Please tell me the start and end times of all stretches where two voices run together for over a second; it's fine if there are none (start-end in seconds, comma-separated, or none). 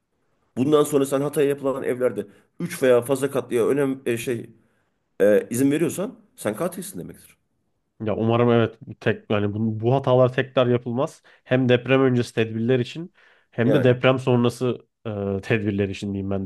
none